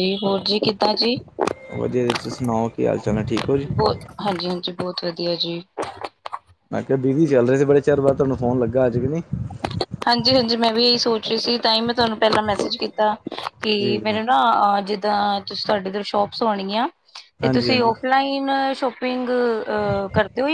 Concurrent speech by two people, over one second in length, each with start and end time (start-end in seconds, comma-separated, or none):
none